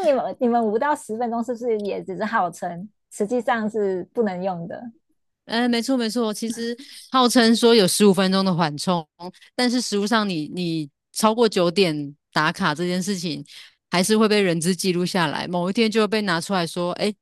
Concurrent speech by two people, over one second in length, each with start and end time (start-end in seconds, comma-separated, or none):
none